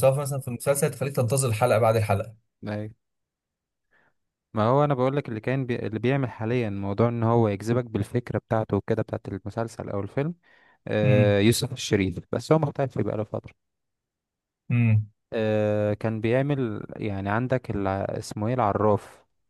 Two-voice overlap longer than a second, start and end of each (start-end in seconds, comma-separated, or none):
none